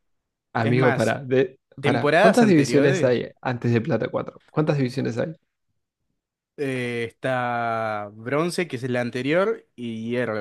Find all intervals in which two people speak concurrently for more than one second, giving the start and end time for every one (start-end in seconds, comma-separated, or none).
1.8-3.2